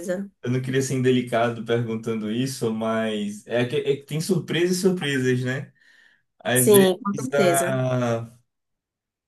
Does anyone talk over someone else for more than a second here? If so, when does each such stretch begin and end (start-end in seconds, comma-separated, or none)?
6.5-7.8